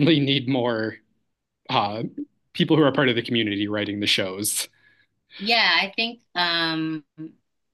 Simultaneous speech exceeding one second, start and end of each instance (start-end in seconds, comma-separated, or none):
none